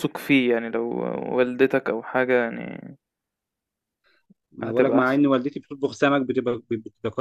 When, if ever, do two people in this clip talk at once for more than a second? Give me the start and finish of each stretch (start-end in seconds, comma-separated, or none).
none